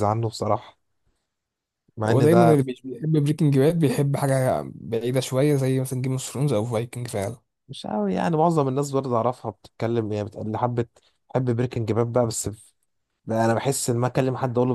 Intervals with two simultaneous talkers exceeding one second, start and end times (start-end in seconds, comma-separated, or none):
none